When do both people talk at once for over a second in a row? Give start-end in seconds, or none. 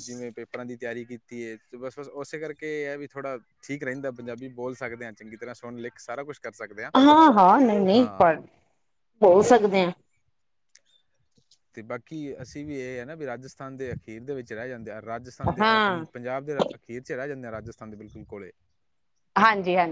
none